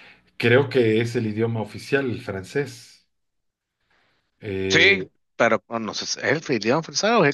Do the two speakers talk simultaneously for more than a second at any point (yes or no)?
no